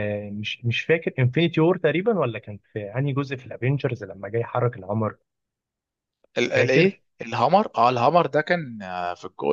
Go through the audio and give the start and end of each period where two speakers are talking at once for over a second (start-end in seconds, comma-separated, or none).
none